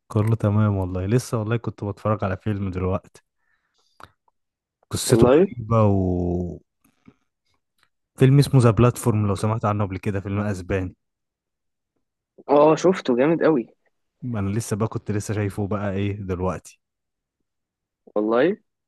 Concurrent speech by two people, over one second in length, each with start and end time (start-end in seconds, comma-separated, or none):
none